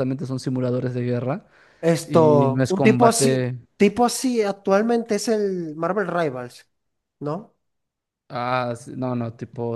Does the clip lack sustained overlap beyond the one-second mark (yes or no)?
no